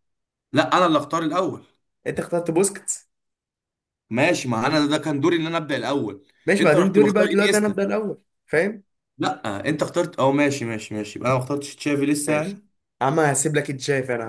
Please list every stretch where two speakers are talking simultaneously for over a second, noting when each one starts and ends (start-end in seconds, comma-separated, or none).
6.5-7.8